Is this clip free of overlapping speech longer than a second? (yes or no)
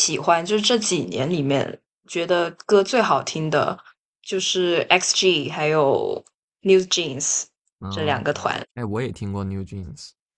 yes